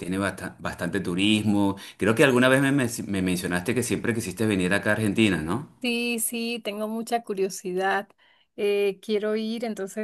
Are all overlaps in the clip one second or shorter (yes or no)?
yes